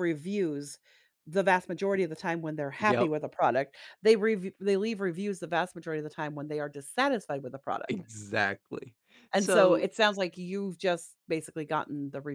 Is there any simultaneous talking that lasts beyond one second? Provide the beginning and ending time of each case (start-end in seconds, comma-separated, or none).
none